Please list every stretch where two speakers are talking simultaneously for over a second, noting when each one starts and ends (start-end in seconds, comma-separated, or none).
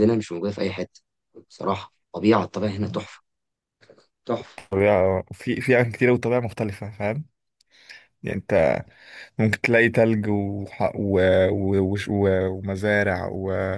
none